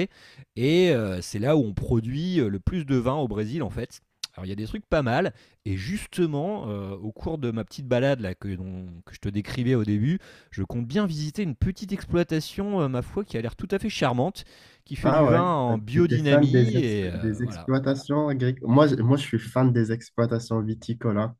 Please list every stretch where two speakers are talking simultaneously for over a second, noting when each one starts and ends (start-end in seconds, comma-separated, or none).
15.0-17.7